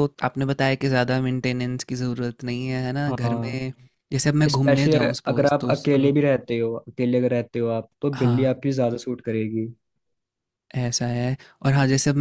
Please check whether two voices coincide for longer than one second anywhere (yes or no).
yes